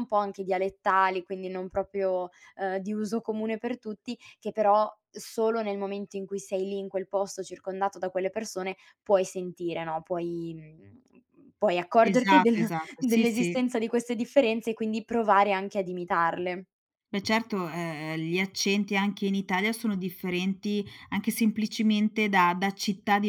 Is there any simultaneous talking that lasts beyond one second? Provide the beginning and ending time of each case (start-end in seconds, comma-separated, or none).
12.0-13.6